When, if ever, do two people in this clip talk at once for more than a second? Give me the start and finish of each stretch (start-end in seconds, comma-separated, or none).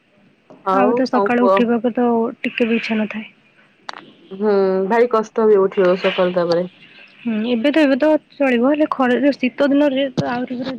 none